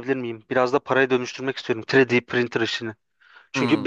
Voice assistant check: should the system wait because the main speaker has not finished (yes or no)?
yes